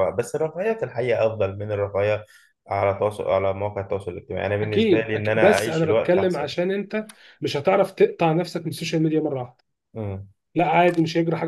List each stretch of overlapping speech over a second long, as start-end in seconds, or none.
4.6-6.5